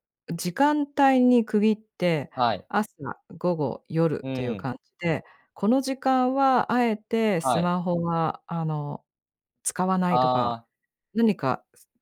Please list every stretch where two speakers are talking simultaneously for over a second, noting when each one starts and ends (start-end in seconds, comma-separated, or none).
none